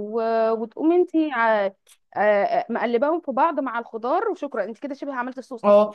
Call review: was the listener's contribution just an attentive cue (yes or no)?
no